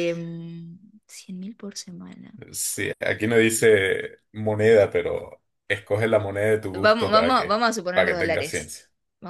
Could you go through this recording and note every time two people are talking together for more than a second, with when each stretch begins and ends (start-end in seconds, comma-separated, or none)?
6.7-8.7